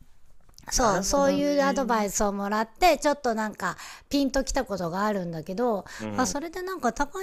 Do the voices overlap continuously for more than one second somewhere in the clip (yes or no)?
yes